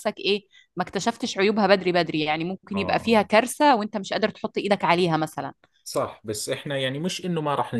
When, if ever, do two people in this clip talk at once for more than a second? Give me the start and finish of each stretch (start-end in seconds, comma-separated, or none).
none